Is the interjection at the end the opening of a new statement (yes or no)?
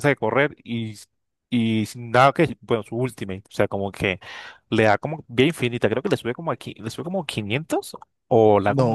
yes